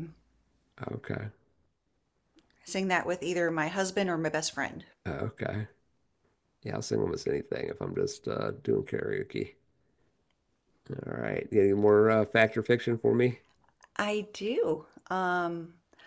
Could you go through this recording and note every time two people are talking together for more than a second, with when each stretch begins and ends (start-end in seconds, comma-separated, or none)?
none